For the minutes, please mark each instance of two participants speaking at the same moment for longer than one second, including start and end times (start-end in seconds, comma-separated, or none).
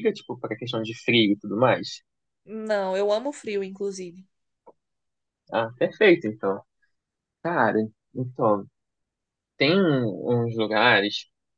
none